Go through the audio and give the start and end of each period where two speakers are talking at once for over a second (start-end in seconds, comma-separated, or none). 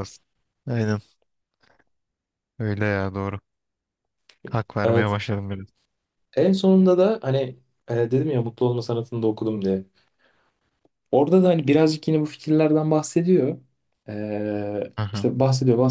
none